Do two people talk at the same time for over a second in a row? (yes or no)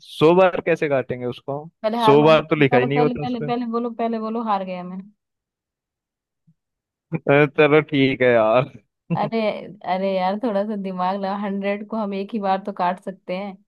yes